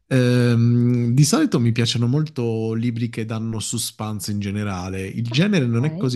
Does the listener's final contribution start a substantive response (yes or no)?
no